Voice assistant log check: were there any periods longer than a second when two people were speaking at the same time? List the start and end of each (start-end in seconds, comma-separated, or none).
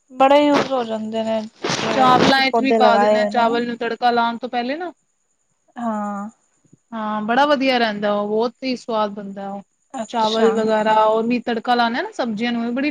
1.9-3.6